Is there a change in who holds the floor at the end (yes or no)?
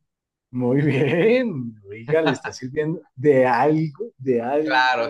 yes